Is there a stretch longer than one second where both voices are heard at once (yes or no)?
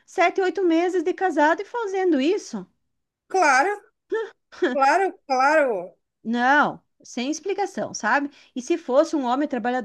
no